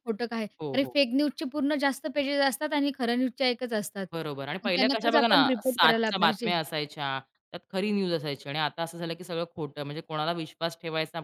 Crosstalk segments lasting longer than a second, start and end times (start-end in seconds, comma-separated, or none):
4.7-6.5